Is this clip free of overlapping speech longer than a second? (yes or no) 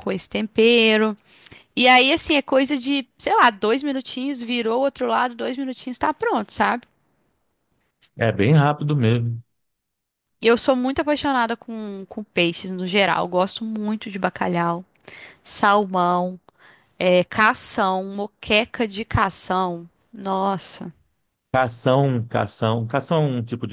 yes